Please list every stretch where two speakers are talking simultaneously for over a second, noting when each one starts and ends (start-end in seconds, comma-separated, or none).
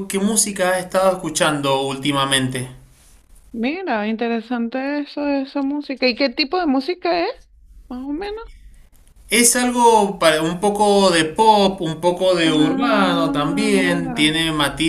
12.4-14.3